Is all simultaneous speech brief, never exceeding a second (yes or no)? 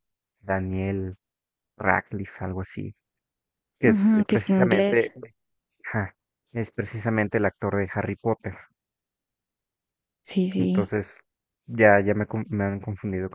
no